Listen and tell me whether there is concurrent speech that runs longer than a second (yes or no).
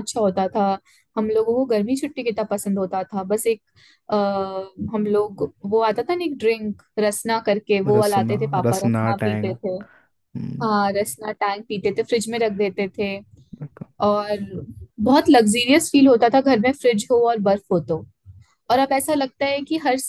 yes